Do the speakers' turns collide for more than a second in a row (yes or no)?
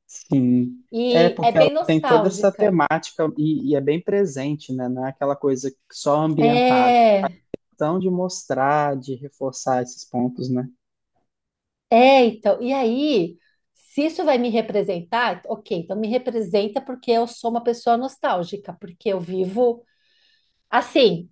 yes